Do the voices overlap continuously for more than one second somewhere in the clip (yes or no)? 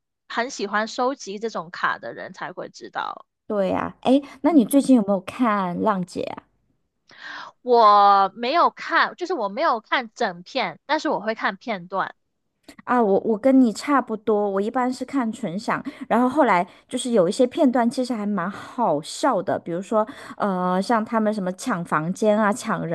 no